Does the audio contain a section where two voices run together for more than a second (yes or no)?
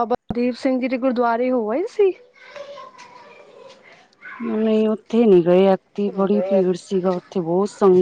no